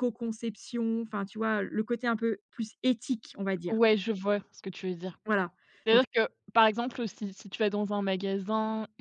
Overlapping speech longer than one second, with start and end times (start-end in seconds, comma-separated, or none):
none